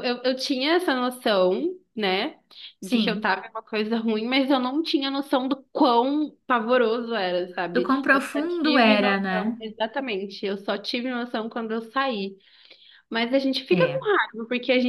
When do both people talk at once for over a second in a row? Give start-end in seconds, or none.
7.7-9.6